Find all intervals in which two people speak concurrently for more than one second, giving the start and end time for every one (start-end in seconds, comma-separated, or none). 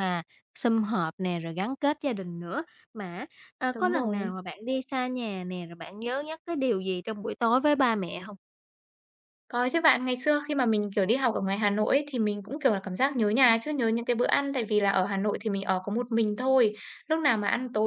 none